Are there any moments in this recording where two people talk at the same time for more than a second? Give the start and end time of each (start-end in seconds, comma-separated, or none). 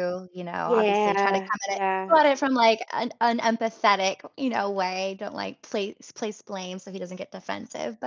0.6-2.2